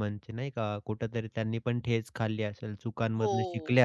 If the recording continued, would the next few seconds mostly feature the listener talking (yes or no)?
no